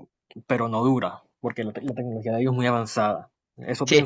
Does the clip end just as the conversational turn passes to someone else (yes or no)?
yes